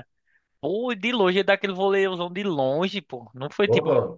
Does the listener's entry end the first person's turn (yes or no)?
no